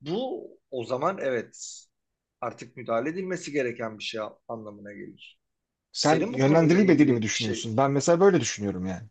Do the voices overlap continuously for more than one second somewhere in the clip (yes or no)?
yes